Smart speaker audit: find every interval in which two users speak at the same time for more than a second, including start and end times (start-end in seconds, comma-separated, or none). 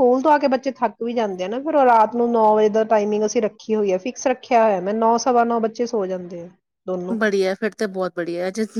none